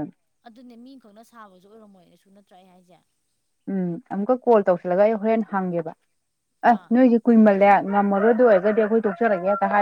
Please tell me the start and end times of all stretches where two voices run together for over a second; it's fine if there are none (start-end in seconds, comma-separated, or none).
none